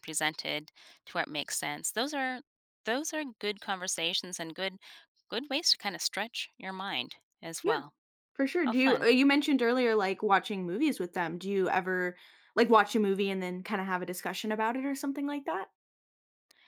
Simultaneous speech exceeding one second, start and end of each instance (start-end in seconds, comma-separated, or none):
none